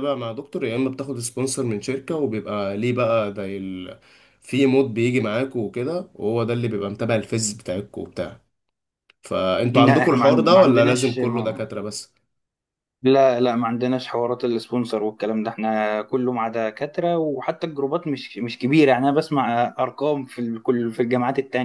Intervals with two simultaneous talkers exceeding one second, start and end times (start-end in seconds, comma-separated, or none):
9.7-11.7